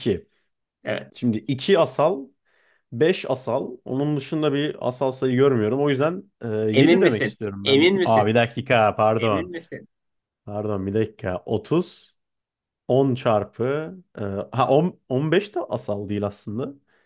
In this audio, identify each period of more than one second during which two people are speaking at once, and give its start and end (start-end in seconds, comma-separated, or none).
6.7-8.3